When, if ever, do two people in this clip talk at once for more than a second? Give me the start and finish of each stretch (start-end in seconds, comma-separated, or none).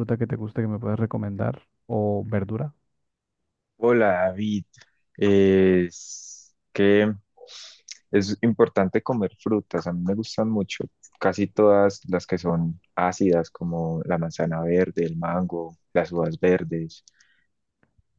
none